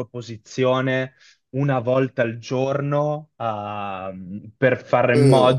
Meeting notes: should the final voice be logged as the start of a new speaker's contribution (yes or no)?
no